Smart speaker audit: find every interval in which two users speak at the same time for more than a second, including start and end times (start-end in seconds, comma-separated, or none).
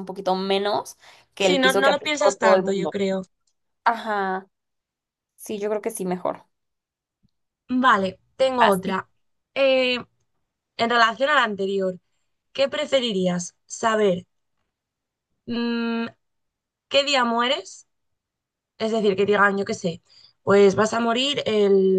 1.4-3.0